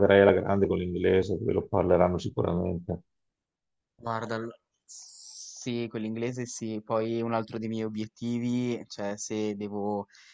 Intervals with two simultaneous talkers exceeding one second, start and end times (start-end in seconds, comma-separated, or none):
none